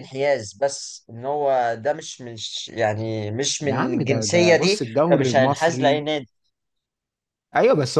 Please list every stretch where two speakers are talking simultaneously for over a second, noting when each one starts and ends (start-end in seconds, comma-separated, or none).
3.6-6.0